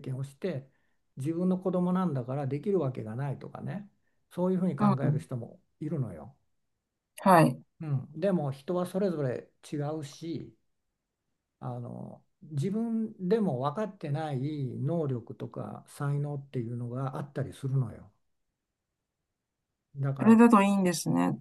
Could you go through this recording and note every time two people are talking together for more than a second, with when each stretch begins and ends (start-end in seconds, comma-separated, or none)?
none